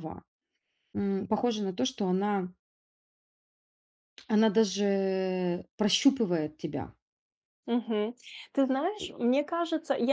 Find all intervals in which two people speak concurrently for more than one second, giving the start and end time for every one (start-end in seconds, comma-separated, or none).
none